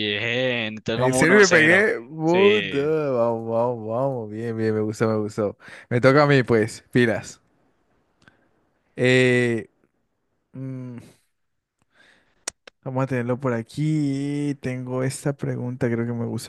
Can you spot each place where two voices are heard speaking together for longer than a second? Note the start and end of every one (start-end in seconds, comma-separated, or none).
0.9-2.9